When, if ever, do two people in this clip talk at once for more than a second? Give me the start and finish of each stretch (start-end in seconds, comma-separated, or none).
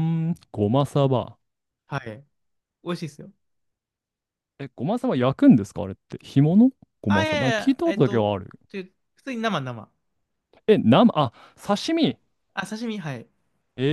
7.1-8.3